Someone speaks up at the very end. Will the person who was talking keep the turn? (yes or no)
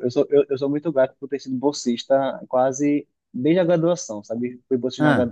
yes